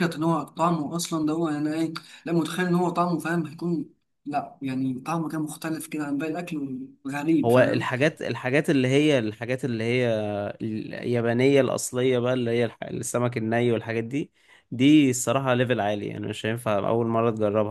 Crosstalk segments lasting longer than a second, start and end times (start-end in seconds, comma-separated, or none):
none